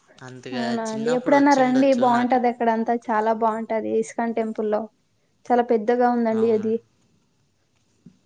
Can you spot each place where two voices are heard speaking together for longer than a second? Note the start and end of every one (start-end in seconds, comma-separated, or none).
0.6-2.4